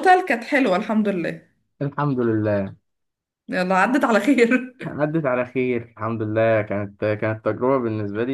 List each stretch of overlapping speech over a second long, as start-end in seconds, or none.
none